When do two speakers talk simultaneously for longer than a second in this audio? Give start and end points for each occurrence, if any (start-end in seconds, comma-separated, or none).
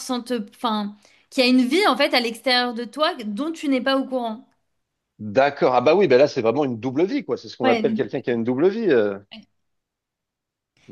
none